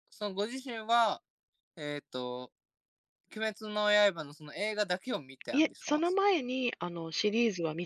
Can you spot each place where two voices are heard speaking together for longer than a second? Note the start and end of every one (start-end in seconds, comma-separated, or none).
none